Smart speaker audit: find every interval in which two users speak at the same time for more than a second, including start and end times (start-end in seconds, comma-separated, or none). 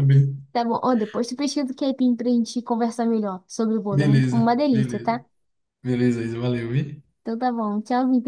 3.9-5.2